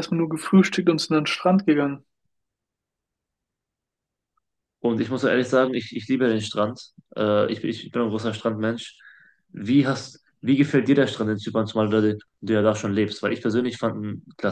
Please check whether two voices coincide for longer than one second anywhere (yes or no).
no